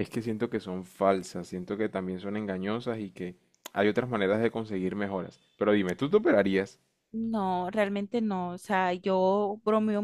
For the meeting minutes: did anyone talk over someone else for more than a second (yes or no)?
no